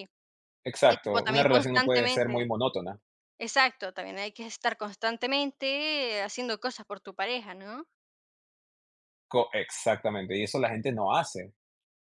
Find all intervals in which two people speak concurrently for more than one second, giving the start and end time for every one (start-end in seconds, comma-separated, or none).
0.9-2.5